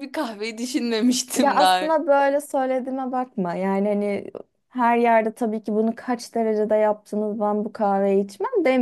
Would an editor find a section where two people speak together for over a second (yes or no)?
no